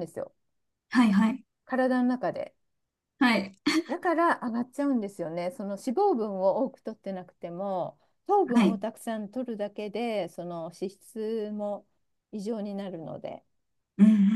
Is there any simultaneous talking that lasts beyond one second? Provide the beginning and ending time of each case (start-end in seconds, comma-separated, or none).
none